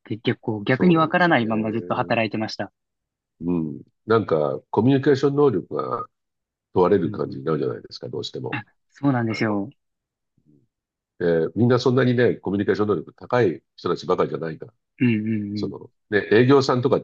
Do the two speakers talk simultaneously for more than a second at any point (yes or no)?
yes